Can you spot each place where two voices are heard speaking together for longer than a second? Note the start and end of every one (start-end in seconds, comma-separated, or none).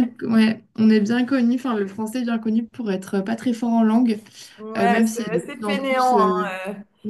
4.8-6.5